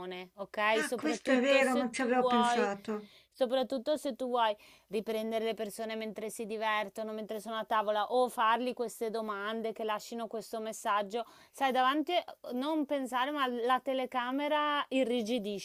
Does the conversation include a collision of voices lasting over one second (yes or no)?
yes